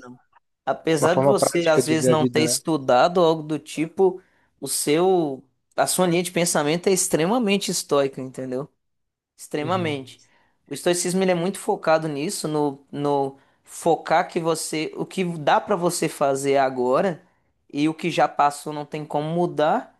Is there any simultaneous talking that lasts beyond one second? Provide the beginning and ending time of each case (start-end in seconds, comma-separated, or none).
1.0-2.5